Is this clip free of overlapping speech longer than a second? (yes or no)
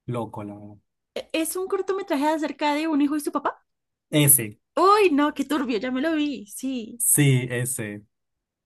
yes